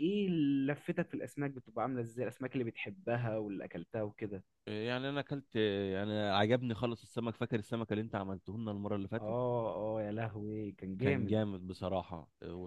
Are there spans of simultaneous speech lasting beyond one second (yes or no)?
no